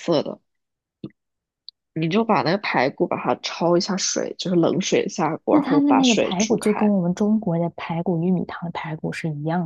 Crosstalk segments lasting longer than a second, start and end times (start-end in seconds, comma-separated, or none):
5.5-6.9